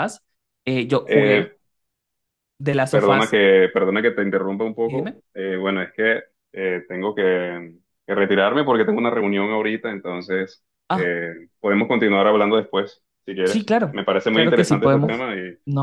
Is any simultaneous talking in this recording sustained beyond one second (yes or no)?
yes